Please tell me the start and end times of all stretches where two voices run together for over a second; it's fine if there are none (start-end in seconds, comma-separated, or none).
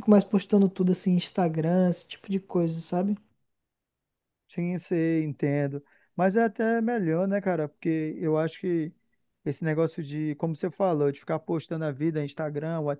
none